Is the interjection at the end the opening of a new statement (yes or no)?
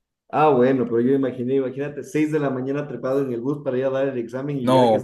yes